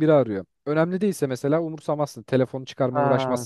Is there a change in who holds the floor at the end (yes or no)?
yes